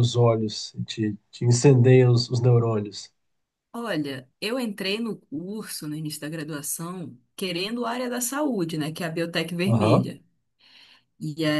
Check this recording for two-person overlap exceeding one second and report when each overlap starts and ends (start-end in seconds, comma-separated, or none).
none